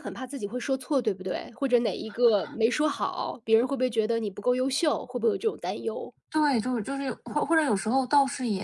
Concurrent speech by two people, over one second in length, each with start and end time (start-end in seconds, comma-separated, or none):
none